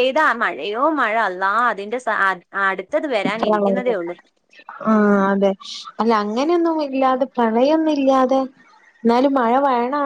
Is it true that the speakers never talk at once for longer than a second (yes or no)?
yes